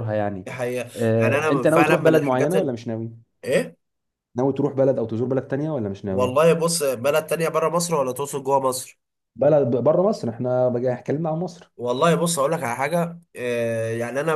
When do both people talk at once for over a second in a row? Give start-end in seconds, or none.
0.9-2.7